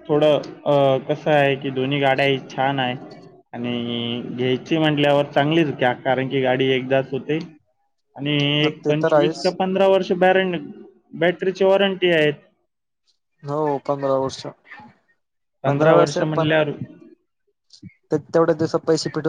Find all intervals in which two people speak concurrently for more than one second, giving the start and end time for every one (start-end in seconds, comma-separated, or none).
none